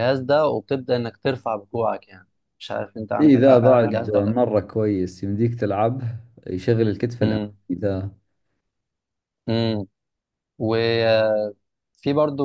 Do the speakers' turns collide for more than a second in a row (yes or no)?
yes